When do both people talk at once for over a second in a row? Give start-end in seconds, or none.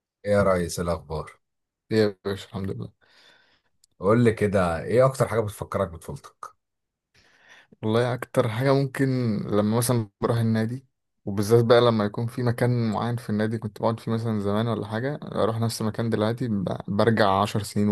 none